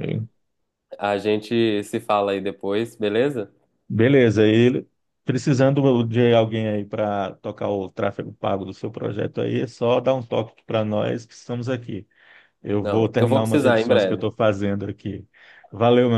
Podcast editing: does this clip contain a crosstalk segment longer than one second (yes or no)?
yes